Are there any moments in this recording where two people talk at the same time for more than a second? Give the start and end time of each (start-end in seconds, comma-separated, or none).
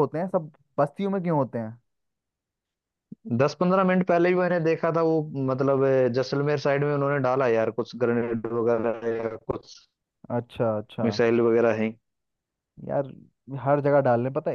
none